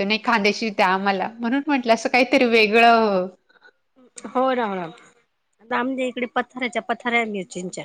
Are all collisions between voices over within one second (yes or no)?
yes